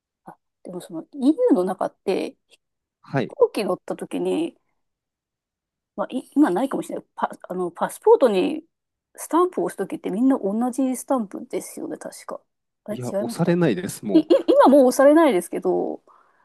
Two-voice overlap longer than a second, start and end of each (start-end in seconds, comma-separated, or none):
12.9-14.3